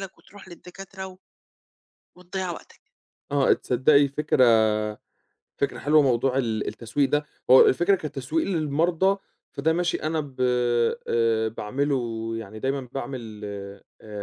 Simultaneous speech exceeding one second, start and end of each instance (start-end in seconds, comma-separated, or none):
none